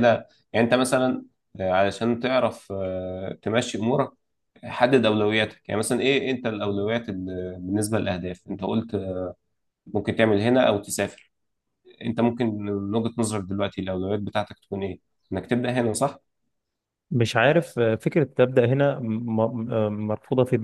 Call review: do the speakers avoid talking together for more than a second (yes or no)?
yes